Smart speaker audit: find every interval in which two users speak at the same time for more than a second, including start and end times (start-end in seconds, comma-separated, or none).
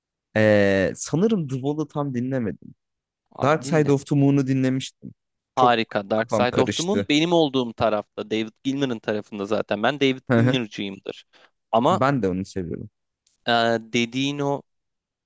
5.6-7.1